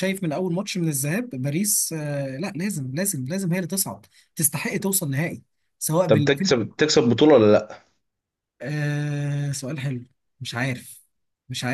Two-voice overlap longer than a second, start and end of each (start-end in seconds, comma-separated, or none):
none